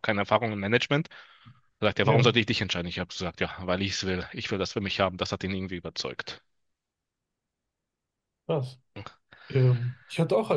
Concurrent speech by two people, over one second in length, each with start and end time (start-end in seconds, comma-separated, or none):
none